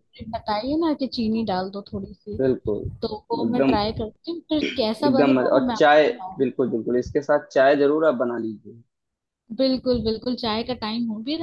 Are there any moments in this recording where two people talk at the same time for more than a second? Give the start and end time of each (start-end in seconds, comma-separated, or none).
4.8-6.5